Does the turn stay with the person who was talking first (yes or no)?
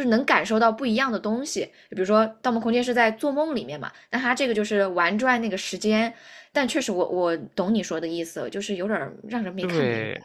no